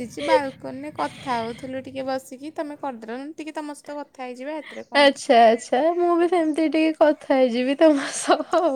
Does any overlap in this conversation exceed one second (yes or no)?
no